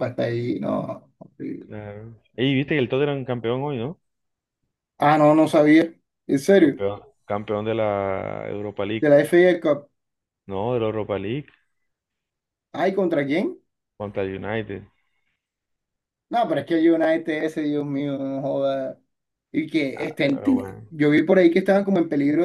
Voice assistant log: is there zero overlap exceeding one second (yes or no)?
yes